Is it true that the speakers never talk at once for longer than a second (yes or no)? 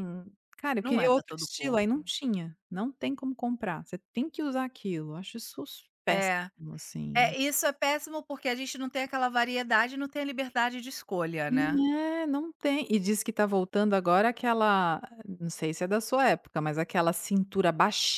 no